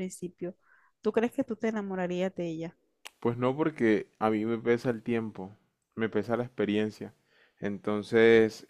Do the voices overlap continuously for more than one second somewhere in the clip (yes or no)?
no